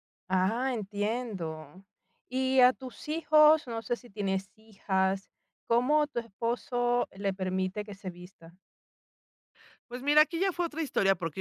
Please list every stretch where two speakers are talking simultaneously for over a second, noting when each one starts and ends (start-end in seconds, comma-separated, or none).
none